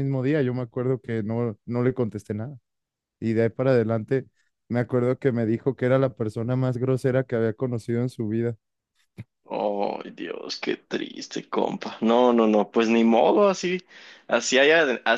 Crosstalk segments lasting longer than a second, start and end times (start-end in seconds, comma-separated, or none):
none